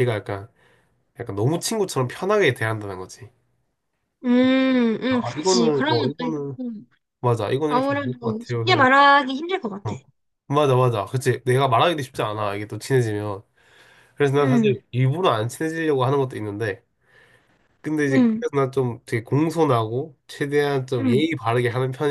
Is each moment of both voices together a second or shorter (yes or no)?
no